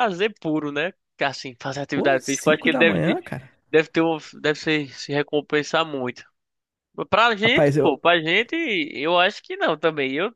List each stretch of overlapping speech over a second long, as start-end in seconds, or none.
1.9-3.2